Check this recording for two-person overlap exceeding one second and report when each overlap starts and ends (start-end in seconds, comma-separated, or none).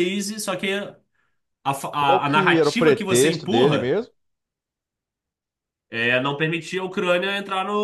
2.0-4.0